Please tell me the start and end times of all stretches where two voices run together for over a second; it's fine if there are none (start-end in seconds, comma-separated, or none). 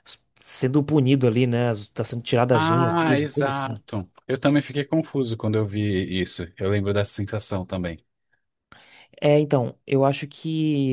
2.5-3.8